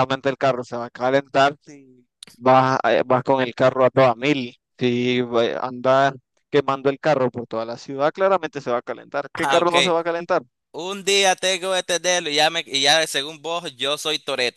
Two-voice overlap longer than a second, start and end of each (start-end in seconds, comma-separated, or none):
none